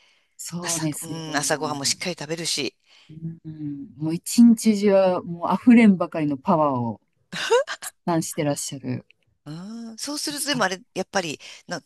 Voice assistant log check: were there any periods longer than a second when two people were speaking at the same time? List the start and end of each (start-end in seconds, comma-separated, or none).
0.6-2.1